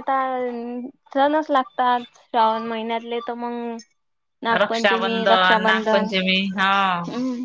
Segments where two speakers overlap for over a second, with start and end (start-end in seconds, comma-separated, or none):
4.6-6.1